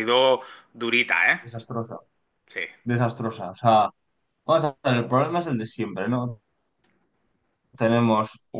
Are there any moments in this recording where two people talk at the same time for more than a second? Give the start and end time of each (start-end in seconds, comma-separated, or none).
none